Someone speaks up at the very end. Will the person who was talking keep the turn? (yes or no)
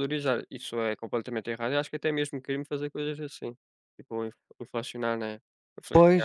no